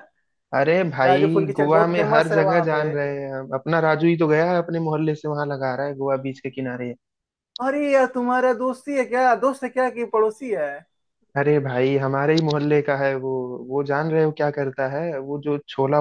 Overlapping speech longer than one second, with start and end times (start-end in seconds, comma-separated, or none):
1.0-2.8